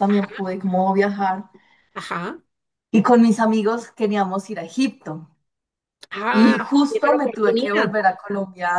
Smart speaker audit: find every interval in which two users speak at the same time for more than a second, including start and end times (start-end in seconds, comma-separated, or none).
6.3-8.0